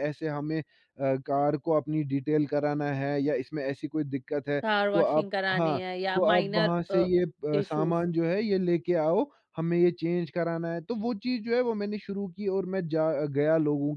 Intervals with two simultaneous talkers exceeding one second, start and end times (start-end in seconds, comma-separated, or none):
4.6-7.0